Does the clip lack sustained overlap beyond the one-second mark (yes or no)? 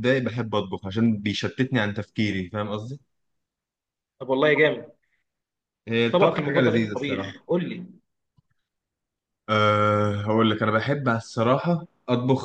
no